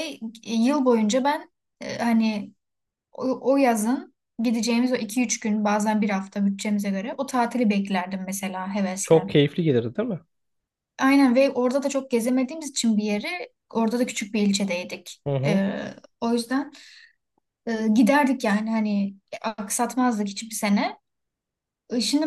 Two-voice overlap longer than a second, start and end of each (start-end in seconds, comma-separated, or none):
none